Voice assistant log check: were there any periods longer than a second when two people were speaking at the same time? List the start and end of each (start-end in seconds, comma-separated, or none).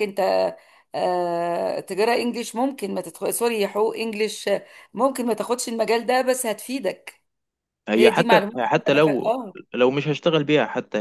8.0-9.3